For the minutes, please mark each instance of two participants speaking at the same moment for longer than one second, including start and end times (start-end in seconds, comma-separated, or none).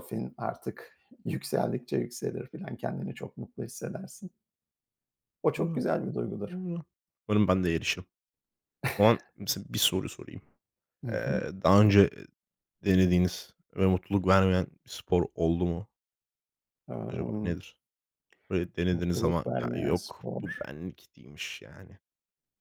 18.9-20.4